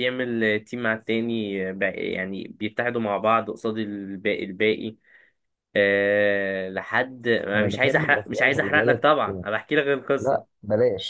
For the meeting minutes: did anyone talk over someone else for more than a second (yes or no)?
yes